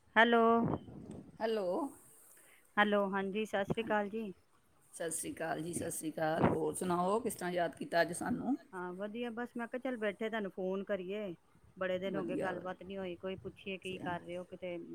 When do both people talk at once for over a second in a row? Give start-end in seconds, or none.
none